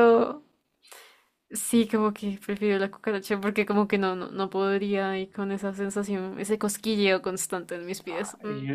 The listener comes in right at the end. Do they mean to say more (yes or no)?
yes